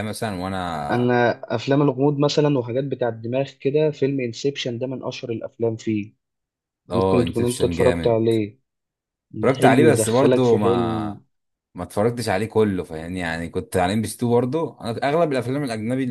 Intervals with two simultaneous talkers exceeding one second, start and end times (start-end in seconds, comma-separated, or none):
6.9-8.2, 9.6-11.2